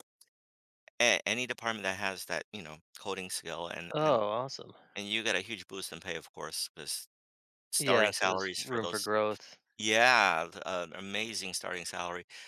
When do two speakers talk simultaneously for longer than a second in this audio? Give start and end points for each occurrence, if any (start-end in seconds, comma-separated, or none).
7.8-9.1